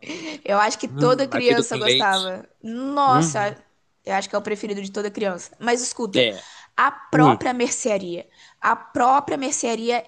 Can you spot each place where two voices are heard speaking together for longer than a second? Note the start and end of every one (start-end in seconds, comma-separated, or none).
0.9-2.3